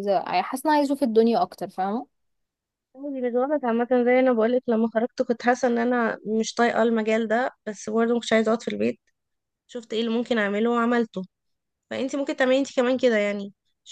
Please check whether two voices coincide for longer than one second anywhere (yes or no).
no